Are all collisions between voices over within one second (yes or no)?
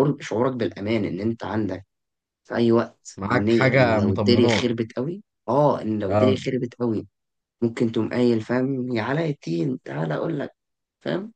no